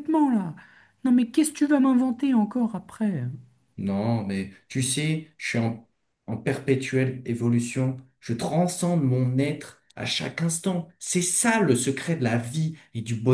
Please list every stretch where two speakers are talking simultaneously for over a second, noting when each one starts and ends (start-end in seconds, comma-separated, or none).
none